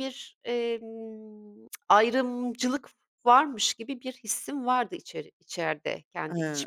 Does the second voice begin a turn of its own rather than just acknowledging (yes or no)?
yes